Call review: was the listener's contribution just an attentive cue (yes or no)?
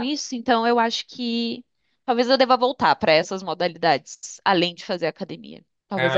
no